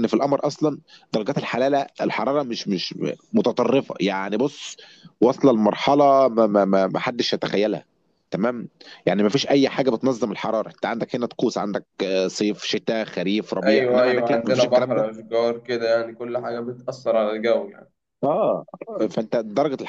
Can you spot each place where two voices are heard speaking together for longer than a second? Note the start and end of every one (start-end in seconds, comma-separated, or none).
13.6-15.1